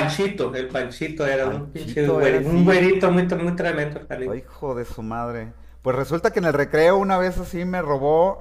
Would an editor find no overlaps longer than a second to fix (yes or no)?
no